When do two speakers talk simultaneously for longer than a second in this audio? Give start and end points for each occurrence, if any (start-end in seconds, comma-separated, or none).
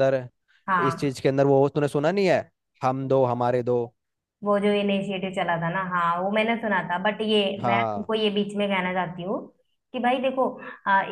none